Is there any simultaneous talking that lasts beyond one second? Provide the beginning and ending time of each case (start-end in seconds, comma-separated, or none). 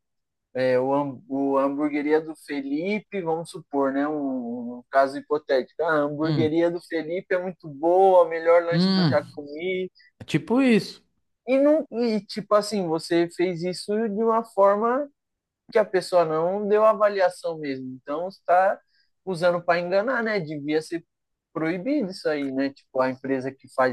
none